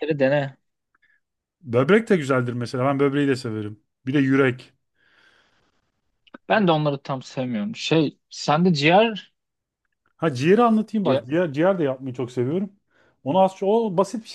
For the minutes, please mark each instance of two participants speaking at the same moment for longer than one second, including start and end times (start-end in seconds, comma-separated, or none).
none